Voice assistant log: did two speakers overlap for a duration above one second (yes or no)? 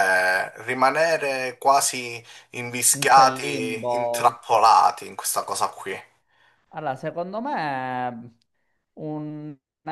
yes